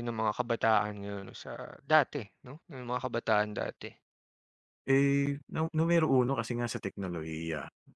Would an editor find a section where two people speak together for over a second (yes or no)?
no